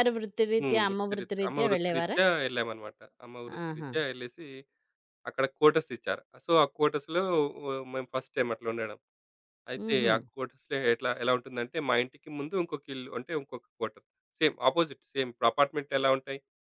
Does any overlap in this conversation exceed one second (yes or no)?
yes